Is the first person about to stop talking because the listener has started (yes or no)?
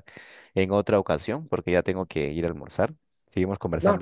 yes